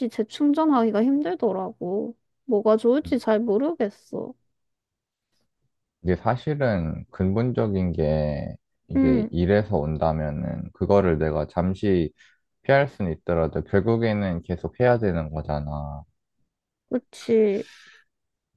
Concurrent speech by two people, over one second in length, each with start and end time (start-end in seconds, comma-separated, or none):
none